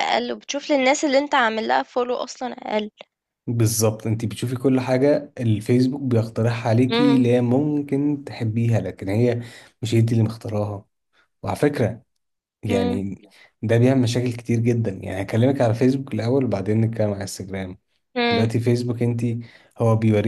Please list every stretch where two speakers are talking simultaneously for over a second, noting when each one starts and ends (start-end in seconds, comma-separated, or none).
none